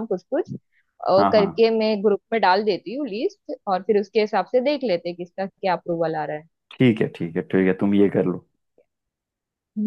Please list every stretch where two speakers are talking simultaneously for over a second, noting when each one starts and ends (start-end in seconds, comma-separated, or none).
none